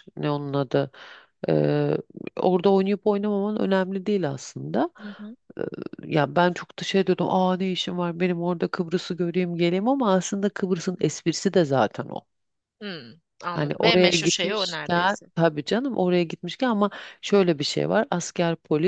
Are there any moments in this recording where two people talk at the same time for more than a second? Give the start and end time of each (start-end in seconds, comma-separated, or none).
13.5-15.3